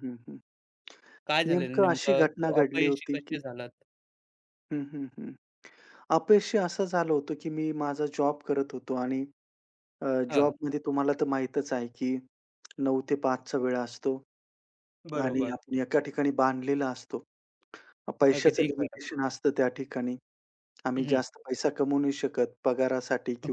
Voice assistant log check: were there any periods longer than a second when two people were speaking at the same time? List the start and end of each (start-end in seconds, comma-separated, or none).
1.5-3.4